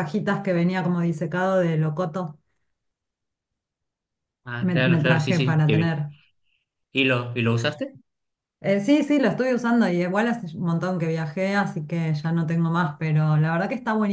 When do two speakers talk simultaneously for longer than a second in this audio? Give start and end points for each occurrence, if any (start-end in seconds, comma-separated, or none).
4.6-6.0